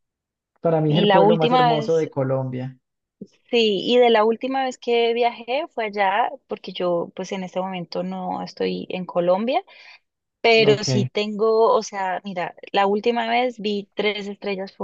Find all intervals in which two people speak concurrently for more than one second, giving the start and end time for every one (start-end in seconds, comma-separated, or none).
0.9-2.1